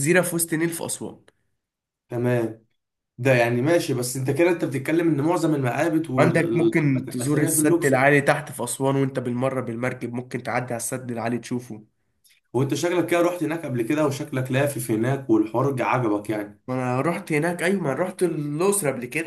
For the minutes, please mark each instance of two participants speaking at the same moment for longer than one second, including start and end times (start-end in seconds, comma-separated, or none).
6.2-8.0